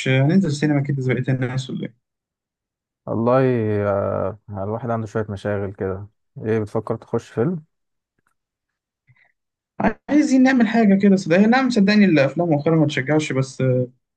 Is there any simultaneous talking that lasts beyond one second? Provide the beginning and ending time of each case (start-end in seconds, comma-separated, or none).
none